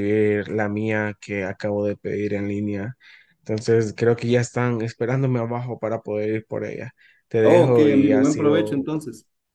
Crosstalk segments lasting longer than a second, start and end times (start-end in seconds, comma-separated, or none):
7.4-8.9